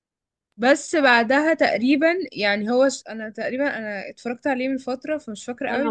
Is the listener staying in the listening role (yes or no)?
yes